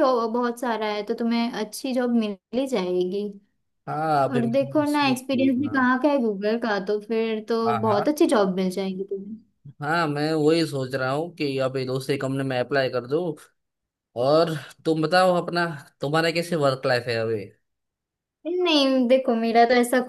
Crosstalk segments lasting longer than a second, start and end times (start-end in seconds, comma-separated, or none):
4.3-5.9